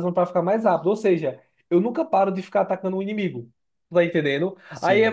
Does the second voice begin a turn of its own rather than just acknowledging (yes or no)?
no